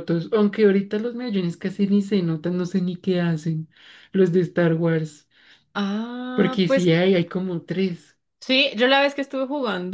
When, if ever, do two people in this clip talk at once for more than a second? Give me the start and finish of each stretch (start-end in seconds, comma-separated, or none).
none